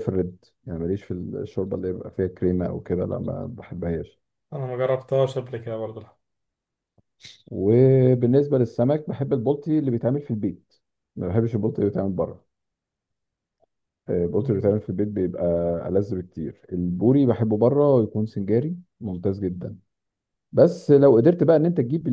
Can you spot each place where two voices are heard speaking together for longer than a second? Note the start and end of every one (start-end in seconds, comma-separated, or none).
none